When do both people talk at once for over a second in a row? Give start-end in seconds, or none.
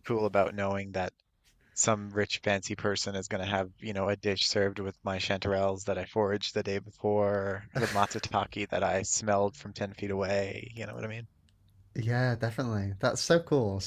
none